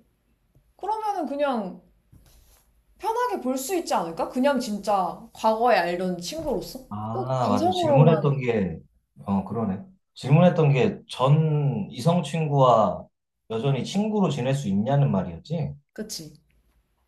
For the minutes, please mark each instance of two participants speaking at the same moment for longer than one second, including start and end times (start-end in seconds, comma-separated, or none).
6.9-8.3